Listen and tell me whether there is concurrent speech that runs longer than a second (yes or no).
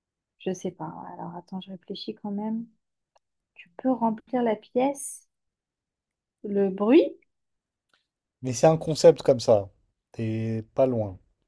no